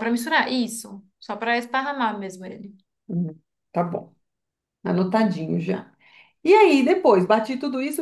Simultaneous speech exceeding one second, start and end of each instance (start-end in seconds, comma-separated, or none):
none